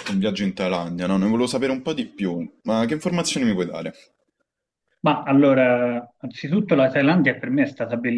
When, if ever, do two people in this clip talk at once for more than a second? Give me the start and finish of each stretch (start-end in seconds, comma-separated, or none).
none